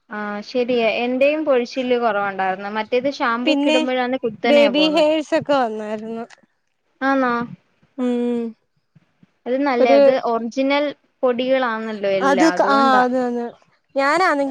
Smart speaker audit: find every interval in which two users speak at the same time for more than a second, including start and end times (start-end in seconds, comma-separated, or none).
none